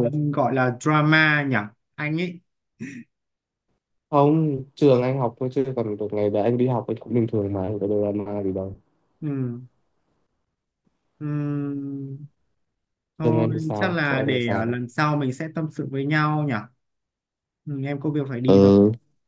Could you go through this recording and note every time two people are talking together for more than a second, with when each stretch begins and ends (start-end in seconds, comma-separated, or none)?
13.2-14.8